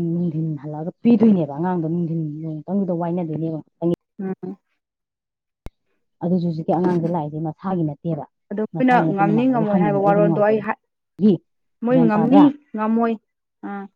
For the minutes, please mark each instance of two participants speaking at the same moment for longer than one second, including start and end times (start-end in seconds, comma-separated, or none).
8.8-10.6